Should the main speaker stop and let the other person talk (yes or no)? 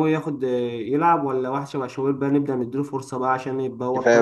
yes